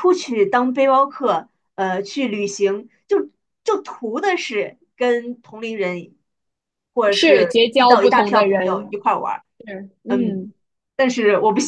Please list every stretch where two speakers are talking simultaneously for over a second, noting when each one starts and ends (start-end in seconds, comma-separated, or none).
7.1-9.1